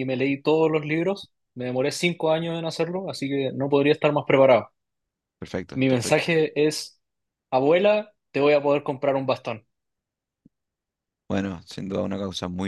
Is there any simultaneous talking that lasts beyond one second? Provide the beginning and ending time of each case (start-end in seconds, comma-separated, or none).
none